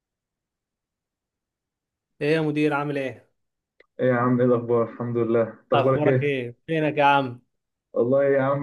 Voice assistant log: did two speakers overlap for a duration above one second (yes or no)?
no